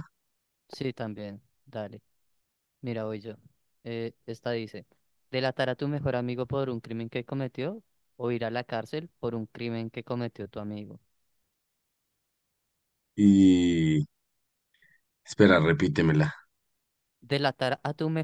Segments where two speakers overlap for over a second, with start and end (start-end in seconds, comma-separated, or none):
none